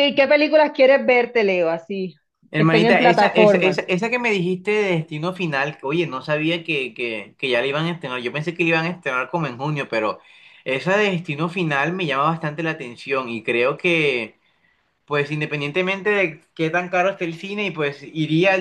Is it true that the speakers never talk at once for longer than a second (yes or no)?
no